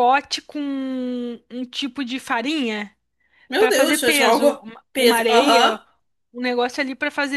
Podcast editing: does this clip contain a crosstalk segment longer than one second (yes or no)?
yes